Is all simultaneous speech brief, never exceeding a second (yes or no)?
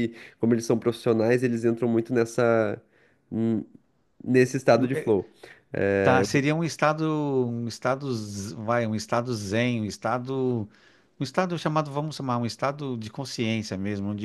yes